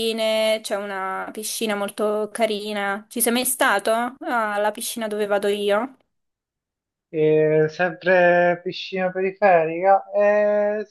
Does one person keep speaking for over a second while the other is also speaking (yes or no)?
no